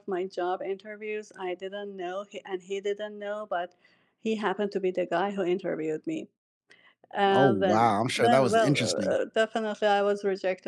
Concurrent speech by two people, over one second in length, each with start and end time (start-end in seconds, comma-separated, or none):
7.3-9.2